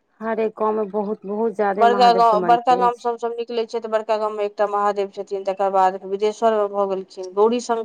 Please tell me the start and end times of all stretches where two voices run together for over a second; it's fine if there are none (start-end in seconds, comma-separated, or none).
1.8-3.2